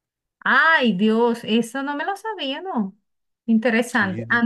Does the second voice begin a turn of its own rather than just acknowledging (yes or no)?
no